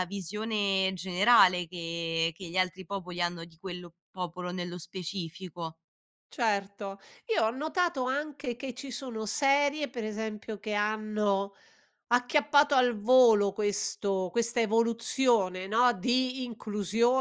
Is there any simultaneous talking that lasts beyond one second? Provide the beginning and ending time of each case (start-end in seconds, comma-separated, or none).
none